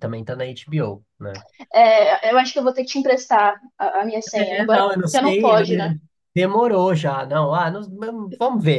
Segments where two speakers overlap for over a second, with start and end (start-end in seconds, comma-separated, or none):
4.3-5.9